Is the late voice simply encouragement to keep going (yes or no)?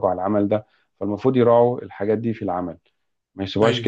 yes